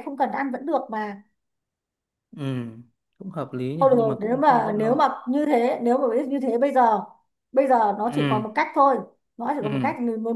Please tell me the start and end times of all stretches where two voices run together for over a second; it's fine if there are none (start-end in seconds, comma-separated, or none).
3.8-5.1